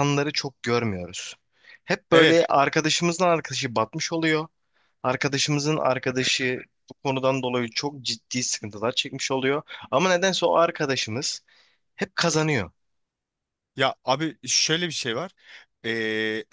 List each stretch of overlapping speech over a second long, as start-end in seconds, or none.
none